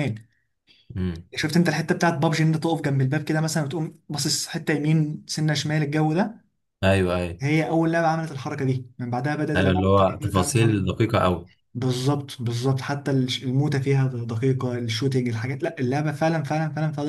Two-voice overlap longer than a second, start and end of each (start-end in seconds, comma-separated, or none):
9.6-10.9